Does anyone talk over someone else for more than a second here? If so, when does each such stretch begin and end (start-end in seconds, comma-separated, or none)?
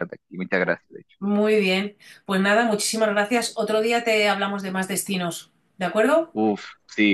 none